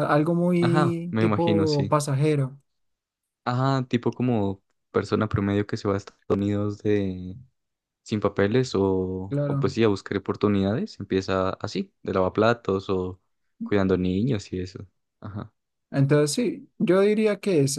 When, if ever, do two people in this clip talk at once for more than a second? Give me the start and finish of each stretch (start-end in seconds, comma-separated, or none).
0.6-2.0